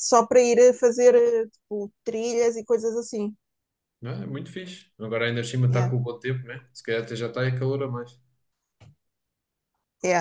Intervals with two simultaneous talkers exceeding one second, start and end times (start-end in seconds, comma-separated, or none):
none